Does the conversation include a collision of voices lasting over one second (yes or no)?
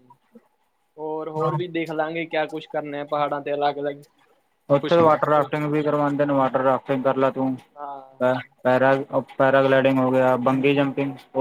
no